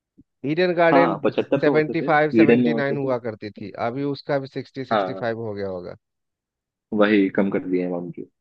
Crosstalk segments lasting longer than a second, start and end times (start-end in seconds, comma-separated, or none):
0.9-3.1